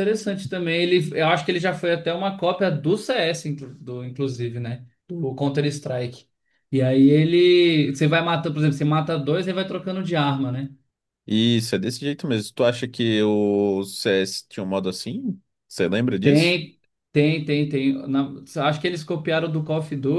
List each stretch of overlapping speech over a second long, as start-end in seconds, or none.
none